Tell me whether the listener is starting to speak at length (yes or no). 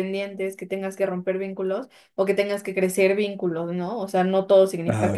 no